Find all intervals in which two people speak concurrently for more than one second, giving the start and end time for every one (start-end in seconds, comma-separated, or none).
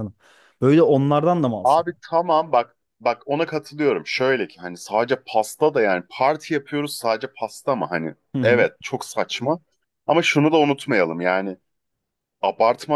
none